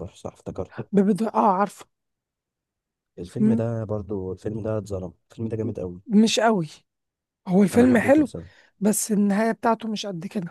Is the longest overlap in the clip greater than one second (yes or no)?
no